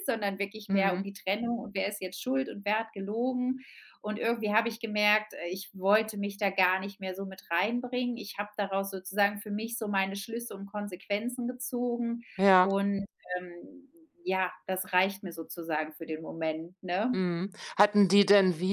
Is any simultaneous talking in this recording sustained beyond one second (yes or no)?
no